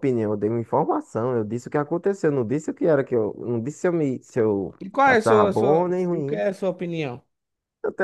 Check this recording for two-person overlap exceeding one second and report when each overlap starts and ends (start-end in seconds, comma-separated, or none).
4.8-6.4